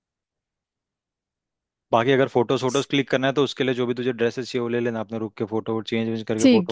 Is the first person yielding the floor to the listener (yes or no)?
yes